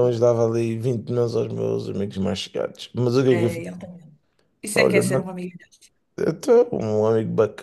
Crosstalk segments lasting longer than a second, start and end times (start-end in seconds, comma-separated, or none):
none